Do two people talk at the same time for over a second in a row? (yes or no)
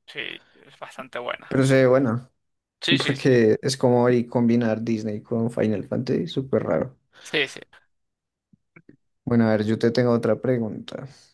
no